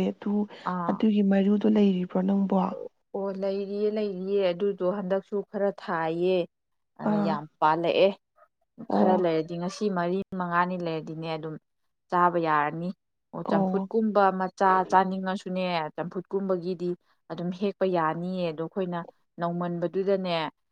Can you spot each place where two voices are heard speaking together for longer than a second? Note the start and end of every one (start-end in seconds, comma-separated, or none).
none